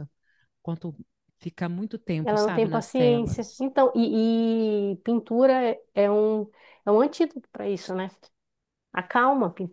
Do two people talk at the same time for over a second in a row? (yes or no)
yes